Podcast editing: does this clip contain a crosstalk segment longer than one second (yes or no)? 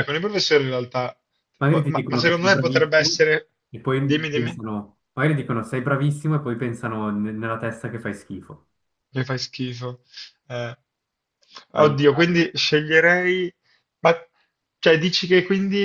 yes